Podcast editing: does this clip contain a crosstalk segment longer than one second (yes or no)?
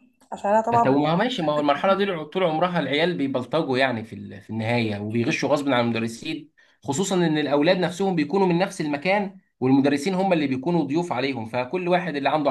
yes